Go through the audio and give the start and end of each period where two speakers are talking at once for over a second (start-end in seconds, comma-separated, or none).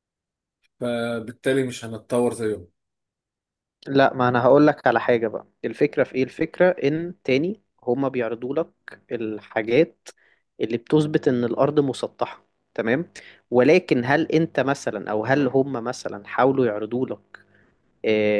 none